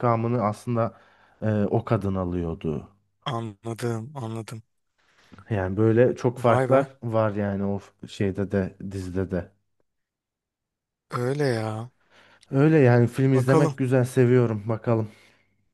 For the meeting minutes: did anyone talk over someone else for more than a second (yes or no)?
no